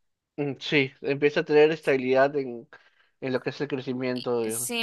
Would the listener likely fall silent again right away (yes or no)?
no